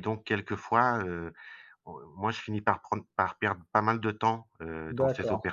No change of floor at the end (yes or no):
no